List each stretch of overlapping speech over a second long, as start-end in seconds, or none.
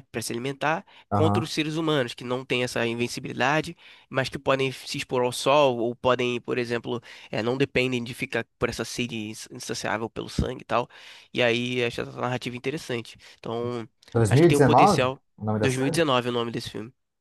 14.3-16.0